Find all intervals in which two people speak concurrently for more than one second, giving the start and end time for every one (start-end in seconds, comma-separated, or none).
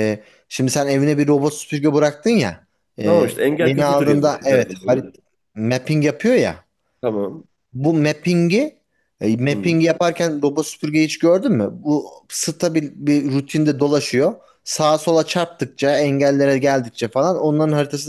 3.0-5.2